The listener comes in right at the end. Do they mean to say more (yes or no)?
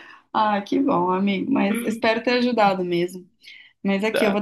no